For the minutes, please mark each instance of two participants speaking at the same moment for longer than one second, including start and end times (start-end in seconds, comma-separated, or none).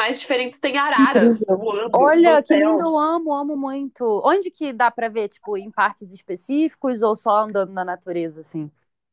0.9-2.9